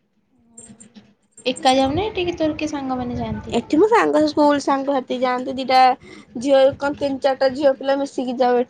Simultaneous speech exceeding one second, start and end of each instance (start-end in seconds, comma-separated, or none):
none